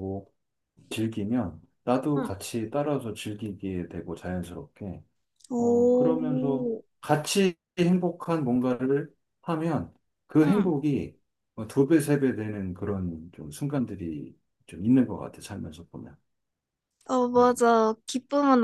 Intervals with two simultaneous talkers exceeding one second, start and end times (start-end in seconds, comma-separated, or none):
5.6-6.8